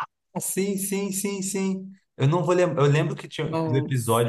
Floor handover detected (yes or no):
no